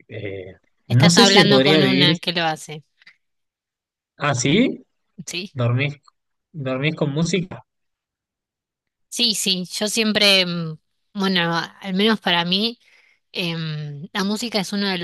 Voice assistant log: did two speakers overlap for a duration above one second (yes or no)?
yes